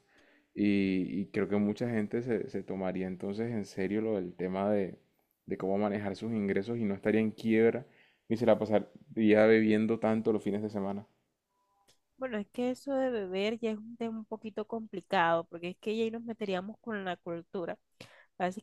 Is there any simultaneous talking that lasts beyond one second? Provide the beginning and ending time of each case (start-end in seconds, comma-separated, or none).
none